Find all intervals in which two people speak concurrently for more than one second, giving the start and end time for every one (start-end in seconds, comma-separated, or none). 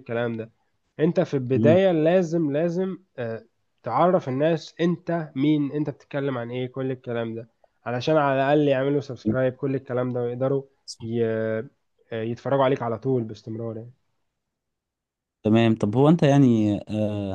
none